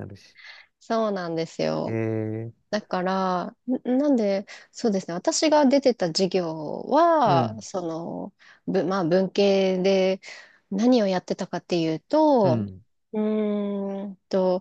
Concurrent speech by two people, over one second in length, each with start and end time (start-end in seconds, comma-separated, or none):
none